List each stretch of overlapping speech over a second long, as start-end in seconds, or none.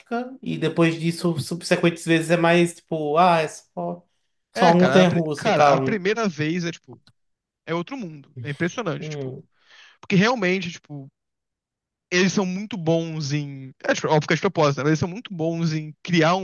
4.5-6.0